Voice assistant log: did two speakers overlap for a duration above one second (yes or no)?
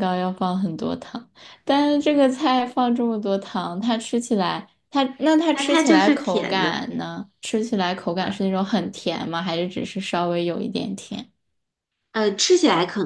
yes